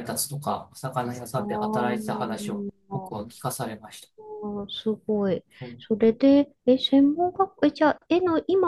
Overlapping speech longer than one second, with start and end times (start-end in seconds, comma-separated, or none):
1.4-3.3